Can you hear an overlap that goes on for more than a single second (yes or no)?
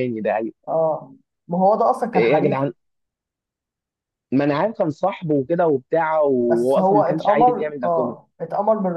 yes